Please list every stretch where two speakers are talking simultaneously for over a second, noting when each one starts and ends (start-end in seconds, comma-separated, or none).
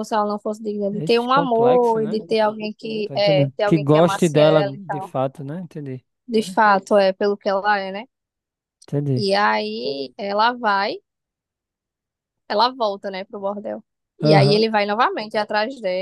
0.9-2.2, 3.0-5.2